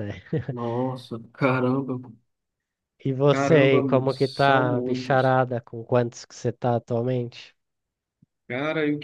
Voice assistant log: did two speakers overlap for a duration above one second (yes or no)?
yes